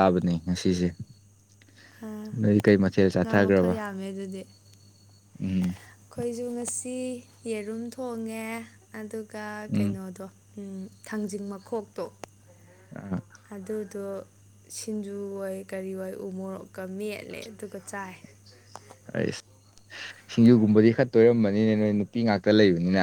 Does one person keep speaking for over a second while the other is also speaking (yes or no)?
no